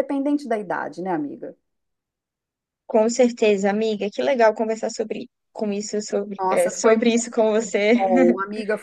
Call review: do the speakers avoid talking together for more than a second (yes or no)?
no